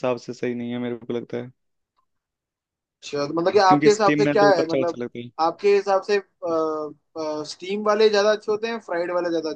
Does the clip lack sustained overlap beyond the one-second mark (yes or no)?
no